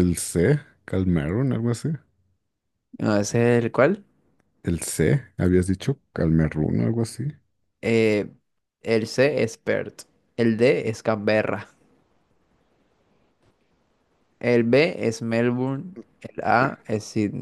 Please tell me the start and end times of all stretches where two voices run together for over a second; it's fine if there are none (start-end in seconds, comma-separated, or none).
none